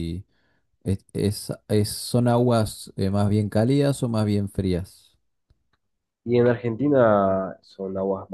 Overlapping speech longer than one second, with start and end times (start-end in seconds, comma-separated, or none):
none